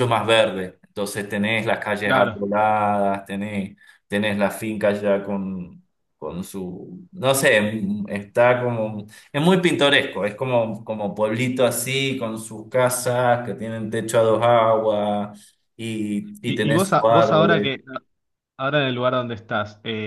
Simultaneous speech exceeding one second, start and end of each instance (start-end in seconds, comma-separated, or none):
16.4-17.7